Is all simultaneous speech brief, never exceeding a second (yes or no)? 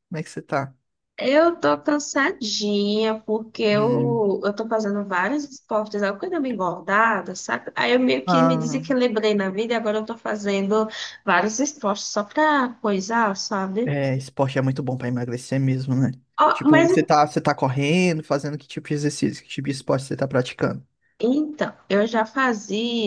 yes